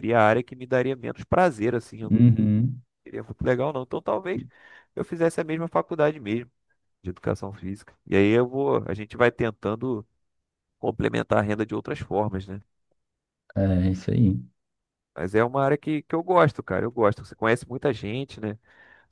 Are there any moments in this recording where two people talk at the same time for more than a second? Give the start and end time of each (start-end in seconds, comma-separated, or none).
none